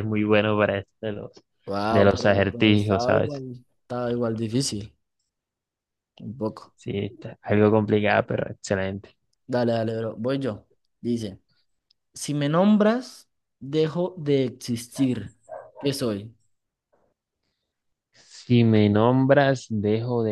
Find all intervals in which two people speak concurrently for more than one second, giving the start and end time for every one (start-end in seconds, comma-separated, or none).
1.9-3.3